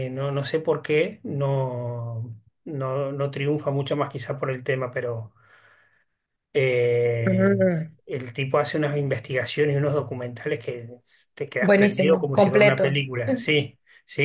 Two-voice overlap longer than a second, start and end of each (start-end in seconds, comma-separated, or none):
11.6-13.0